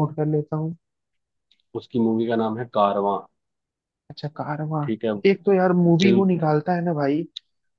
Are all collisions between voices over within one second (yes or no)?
yes